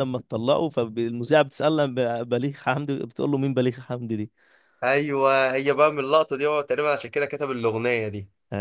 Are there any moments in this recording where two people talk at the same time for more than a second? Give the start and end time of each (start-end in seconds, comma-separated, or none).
none